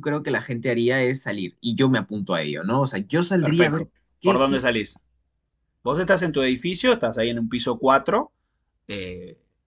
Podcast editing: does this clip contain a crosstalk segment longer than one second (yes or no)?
yes